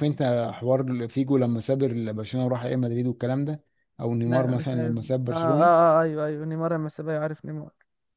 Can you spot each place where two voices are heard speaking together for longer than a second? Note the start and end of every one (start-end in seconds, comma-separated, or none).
4.2-5.8